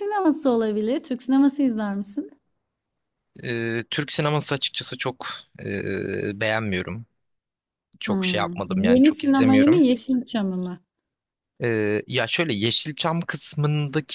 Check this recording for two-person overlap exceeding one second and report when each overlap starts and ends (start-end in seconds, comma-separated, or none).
8.1-9.8